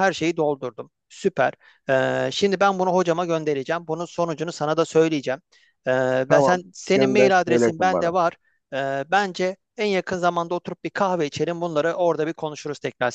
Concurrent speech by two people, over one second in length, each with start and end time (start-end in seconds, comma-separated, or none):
6.3-8.1